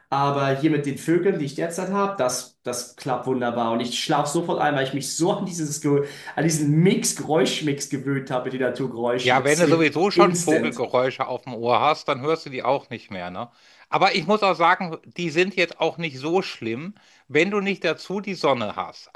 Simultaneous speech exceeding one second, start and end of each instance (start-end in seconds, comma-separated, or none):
9.2-10.8